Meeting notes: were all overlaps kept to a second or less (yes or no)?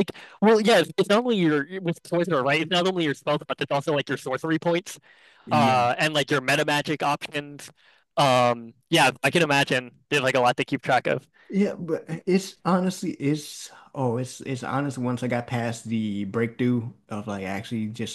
yes